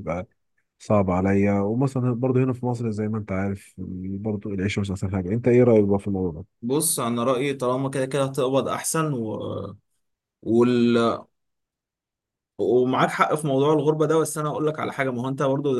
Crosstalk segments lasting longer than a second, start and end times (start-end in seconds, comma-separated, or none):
none